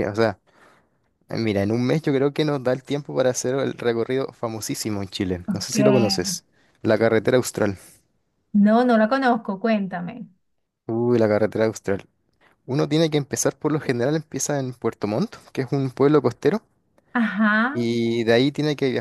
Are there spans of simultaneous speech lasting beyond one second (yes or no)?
no